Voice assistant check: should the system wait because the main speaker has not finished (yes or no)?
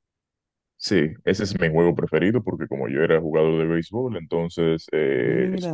yes